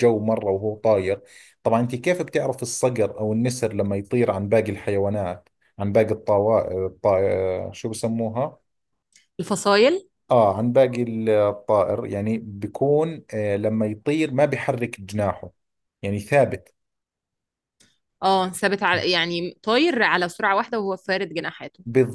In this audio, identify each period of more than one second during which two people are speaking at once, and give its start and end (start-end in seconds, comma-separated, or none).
none